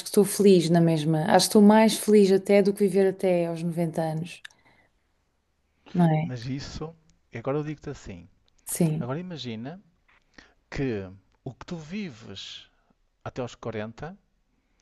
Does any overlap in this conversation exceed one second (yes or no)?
no